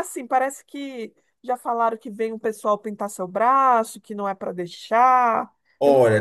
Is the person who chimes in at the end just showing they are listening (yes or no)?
no